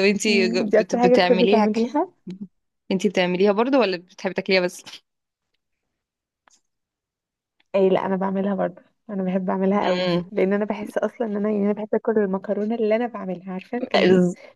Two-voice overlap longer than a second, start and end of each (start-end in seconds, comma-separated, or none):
0.7-1.9